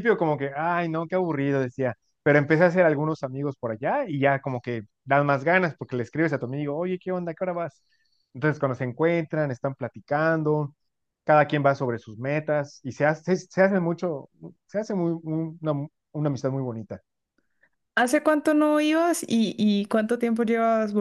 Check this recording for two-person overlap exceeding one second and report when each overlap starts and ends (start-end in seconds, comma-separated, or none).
none